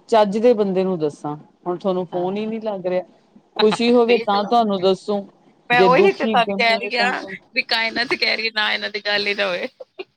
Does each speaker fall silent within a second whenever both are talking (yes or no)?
no